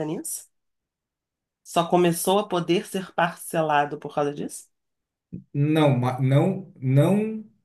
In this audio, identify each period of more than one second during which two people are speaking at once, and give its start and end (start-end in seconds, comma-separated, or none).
none